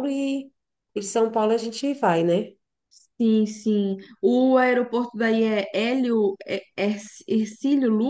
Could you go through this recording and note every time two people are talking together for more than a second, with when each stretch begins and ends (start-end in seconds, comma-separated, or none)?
none